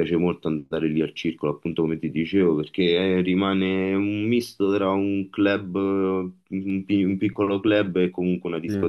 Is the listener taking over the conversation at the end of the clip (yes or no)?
yes